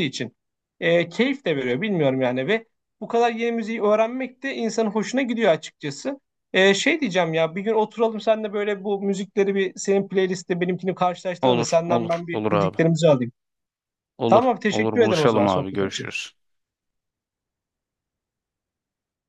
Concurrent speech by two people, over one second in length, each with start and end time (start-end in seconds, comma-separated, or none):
11.4-12.8, 14.3-16.1